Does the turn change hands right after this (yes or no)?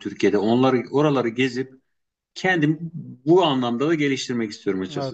yes